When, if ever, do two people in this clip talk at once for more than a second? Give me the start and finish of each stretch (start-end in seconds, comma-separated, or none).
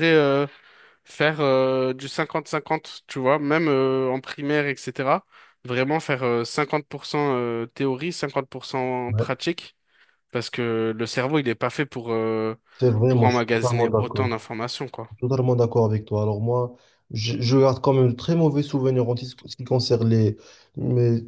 13.1-14.3